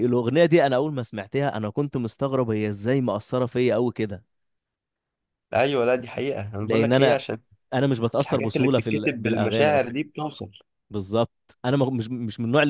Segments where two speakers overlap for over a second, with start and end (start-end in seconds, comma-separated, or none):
8.2-9.9